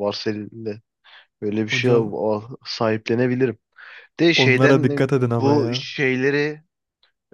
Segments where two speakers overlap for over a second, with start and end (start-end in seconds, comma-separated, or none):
4.4-5.8